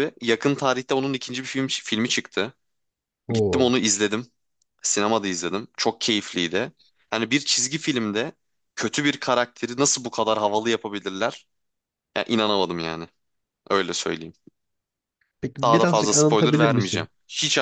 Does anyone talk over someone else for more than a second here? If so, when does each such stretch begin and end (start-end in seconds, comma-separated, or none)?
15.6-17.1